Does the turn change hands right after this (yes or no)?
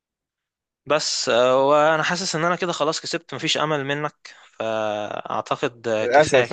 yes